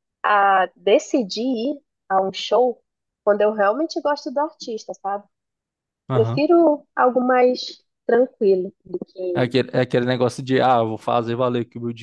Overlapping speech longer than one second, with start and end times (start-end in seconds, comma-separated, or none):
none